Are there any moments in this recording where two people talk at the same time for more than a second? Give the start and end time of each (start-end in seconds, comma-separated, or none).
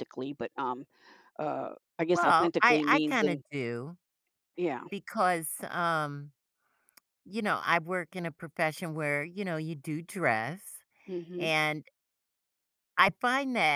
2.1-3.4